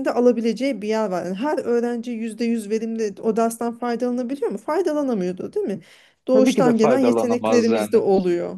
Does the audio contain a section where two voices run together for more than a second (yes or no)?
yes